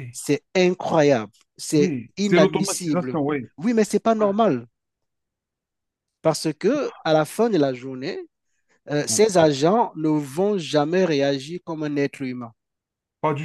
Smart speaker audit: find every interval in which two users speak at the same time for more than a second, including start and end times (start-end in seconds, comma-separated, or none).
1.7-3.2